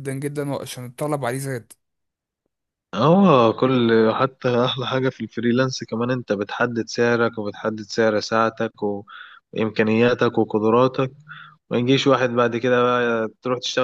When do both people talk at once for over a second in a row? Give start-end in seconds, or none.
none